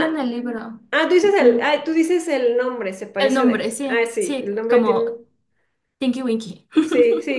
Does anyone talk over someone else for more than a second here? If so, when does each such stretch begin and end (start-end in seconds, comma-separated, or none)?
3.2-5.0